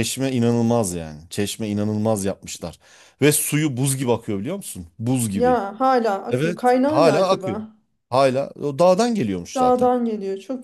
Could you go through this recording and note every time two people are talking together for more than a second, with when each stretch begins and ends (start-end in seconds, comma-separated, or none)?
6.3-7.6